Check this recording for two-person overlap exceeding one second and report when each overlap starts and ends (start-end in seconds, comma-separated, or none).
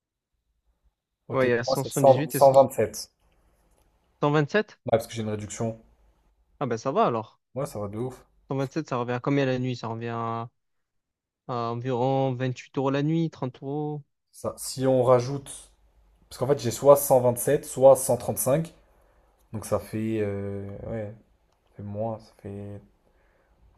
1.3-2.5